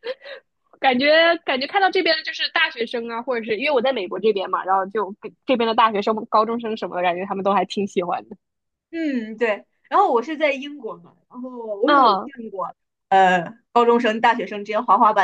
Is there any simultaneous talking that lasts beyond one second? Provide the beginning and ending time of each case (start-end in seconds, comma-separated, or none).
none